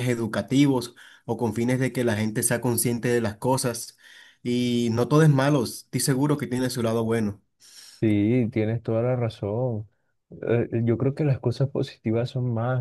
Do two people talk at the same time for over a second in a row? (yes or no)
no